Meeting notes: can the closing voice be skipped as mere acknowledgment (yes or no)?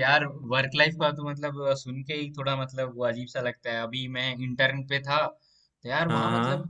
yes